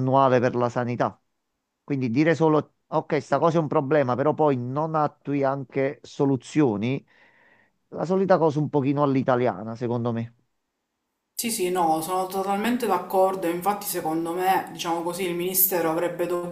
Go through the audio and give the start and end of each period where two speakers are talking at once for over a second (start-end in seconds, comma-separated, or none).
none